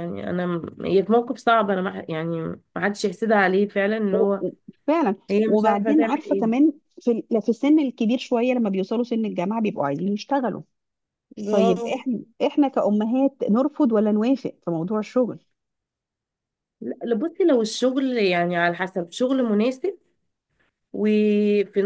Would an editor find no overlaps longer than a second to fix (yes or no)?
no